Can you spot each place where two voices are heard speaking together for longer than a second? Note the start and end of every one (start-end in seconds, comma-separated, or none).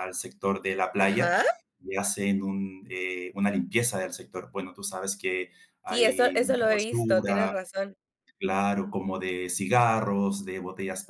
5.9-7.5